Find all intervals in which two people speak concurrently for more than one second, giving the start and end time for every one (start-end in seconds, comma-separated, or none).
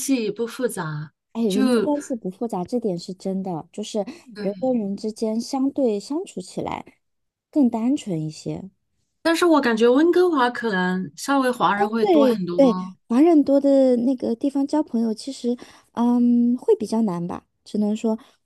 none